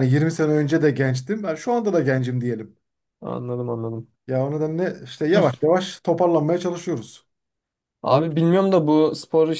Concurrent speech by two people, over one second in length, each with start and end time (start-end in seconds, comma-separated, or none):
none